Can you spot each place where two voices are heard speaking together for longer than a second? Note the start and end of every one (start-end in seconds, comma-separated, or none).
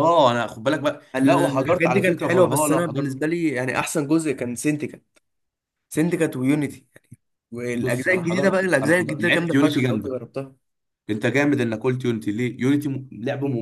1.1-3.2, 7.8-10.2